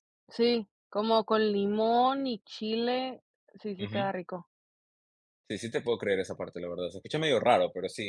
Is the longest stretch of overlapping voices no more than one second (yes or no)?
yes